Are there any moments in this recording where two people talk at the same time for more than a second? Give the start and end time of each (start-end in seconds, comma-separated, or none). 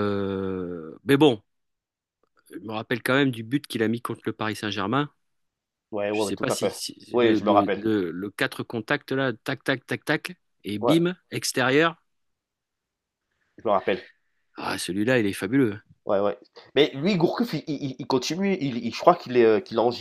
6.1-7.8